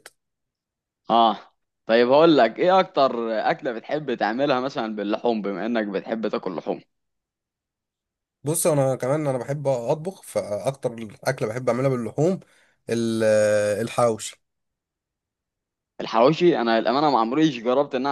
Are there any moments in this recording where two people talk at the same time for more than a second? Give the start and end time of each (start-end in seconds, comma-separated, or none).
none